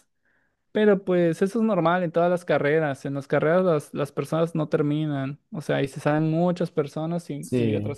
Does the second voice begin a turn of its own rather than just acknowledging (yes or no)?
no